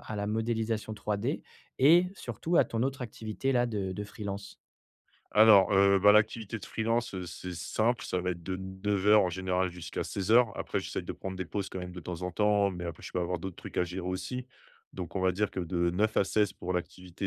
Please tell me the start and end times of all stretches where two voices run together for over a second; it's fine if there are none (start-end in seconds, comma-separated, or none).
none